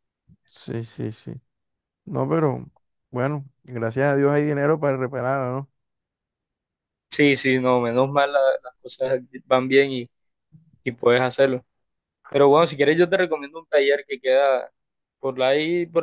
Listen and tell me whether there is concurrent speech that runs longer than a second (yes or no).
no